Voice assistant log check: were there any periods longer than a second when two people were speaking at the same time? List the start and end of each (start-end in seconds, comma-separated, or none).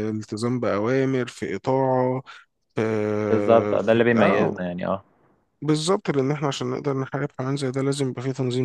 3.3-4.5